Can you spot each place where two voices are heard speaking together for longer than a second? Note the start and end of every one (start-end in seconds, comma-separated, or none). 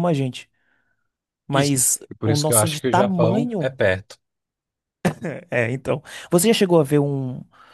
1.5-3.8